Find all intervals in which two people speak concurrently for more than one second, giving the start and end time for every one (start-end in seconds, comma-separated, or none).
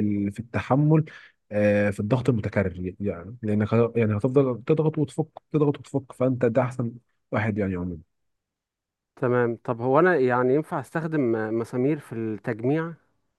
none